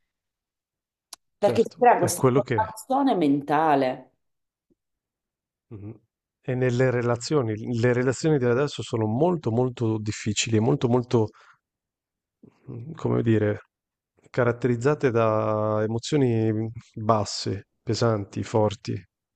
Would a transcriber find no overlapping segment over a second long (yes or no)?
no